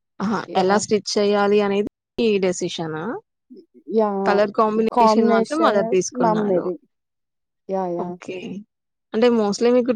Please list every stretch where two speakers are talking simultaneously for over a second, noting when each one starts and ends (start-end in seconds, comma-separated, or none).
5.0-6.7